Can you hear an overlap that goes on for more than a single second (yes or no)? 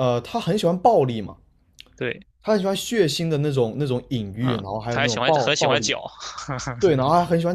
yes